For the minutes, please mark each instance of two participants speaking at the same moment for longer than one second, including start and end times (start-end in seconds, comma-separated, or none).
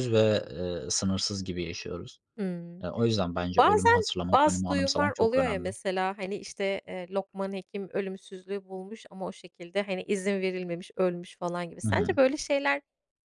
3.6-5.7